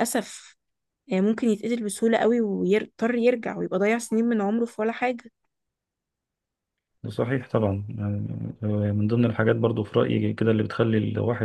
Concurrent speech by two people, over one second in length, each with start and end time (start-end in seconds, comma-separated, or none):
none